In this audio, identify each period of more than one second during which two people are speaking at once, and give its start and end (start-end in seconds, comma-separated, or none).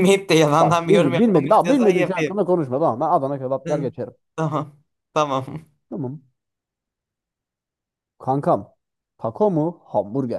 0.6-2.3